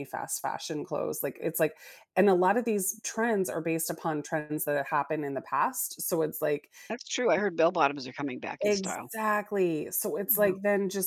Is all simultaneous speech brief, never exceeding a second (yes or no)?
yes